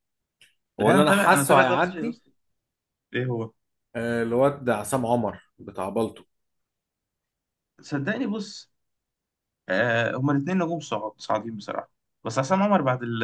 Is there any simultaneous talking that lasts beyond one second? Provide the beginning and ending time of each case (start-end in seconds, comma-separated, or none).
0.8-2.2